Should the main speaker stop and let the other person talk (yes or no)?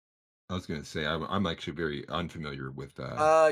yes